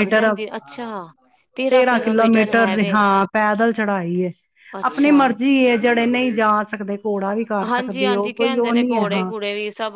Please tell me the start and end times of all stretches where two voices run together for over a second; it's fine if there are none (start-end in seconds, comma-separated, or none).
7.7-9.3